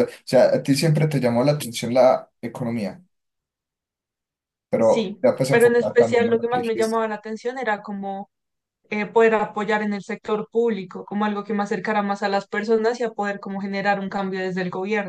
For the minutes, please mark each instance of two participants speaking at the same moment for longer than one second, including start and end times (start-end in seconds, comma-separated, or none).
4.8-7.0